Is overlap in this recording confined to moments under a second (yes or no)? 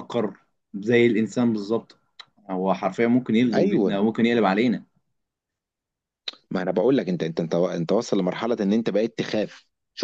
yes